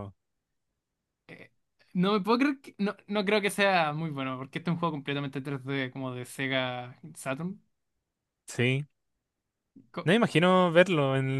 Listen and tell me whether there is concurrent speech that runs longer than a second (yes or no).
no